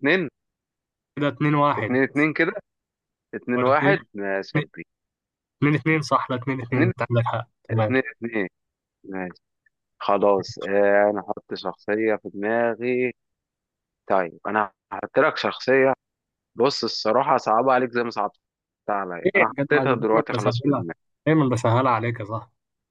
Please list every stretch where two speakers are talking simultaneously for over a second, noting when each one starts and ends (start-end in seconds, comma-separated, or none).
19.2-20.9